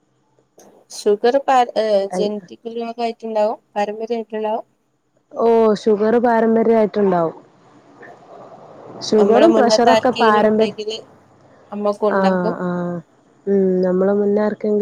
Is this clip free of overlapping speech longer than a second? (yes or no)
no